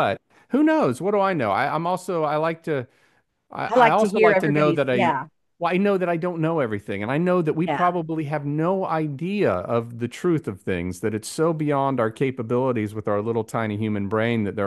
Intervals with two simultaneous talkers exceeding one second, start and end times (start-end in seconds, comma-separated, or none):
3.7-5.2